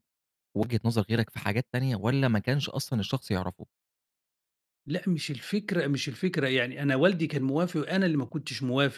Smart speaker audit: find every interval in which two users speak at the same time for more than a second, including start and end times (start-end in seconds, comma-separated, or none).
none